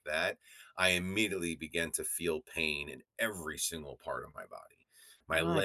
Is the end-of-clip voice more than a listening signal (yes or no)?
no